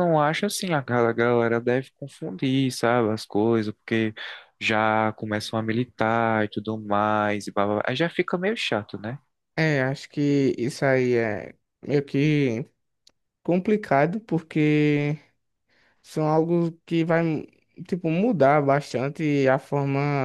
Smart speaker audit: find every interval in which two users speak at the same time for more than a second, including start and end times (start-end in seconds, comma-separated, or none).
none